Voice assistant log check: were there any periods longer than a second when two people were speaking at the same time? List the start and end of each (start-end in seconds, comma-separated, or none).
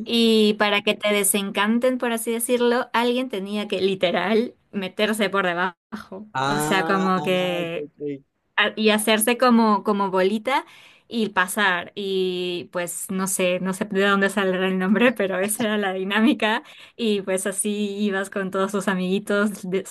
6.3-7.9